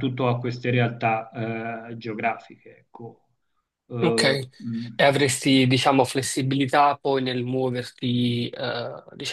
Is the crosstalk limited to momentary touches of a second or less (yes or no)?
yes